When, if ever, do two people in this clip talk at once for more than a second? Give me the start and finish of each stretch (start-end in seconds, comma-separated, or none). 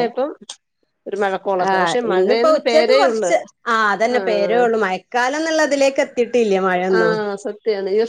1.7-3.3